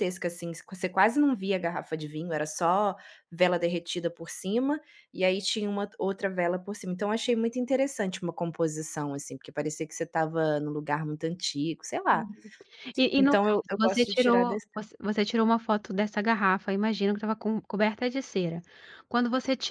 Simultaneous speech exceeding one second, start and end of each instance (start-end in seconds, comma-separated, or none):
13.2-14.7